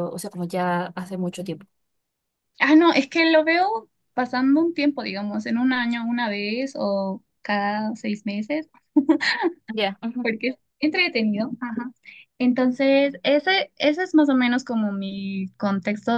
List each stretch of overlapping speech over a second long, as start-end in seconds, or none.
none